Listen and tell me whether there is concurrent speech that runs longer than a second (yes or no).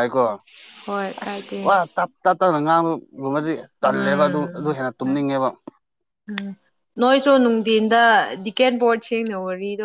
no